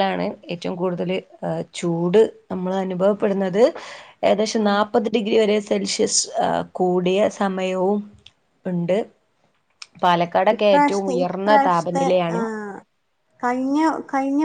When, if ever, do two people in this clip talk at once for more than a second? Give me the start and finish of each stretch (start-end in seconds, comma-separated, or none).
10.6-12.4